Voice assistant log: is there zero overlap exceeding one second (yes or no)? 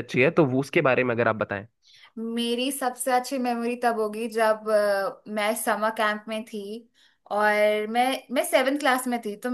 yes